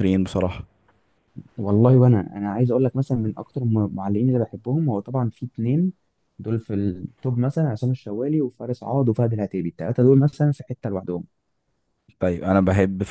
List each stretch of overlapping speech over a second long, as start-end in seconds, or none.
none